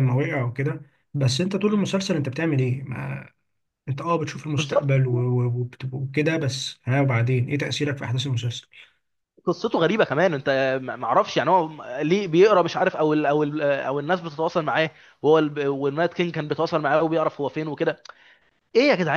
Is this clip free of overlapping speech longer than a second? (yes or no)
yes